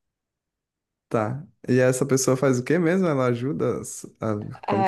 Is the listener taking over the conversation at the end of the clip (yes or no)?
yes